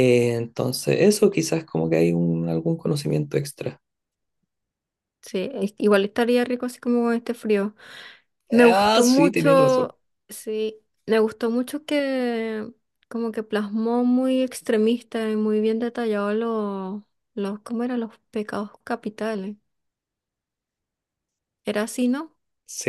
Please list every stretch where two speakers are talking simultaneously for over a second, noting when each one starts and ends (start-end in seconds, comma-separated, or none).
8.5-9.9